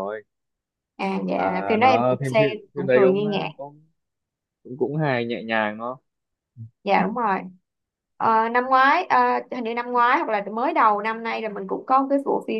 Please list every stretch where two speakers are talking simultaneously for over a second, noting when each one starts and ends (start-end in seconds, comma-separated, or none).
1.3-3.5